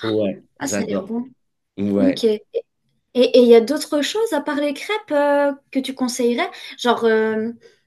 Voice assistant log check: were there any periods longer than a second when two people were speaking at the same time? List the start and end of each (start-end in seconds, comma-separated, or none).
none